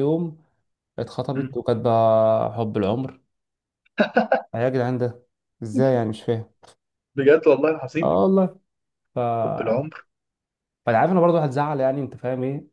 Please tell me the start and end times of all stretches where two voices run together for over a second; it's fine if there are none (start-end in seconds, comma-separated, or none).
none